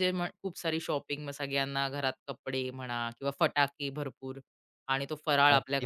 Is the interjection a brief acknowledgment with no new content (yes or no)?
yes